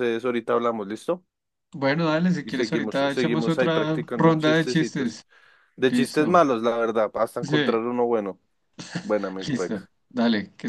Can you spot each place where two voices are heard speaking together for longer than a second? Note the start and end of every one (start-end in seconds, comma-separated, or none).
2.4-5.2